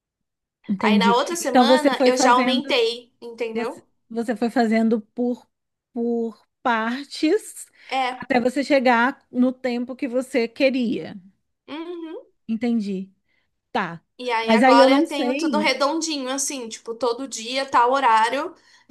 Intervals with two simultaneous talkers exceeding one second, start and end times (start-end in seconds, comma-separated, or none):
0.8-2.8, 14.4-15.7